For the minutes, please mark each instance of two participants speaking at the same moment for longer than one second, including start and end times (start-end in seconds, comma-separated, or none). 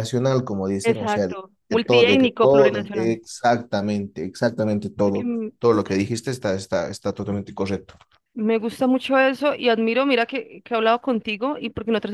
0.8-3.2